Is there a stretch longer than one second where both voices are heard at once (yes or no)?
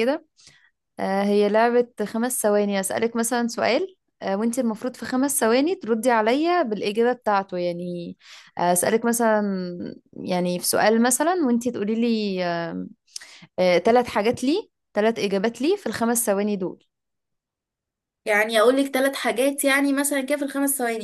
no